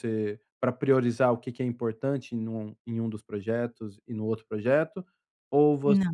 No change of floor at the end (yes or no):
yes